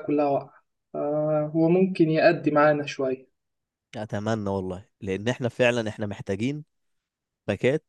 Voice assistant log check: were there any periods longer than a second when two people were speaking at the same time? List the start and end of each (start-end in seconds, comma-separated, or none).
none